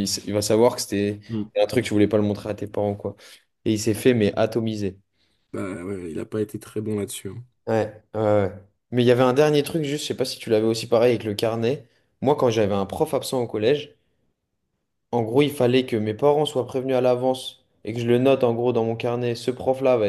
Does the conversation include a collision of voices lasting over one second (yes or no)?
no